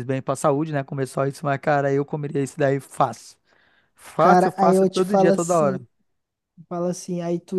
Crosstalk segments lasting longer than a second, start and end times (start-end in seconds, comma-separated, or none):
4.2-5.8